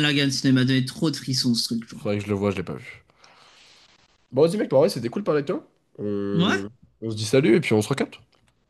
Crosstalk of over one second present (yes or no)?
no